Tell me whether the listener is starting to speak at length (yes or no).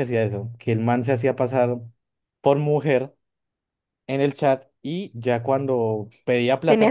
no